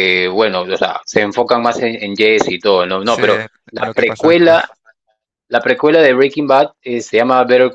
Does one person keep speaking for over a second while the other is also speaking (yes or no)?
yes